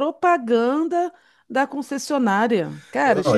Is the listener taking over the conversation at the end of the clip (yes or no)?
yes